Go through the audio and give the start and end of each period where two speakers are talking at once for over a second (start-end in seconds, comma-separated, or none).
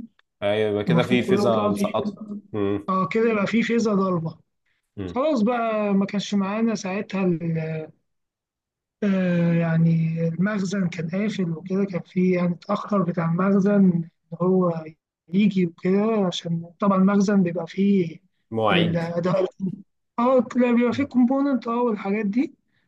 0.9-2.2